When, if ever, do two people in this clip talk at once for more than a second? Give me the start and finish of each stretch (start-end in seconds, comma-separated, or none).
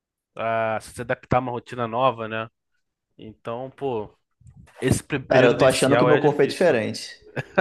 5.3-6.8